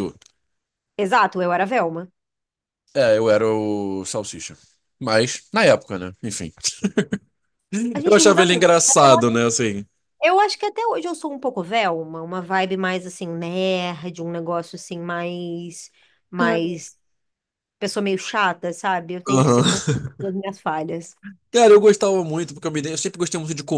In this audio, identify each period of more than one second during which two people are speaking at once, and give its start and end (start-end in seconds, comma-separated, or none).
8.1-9.4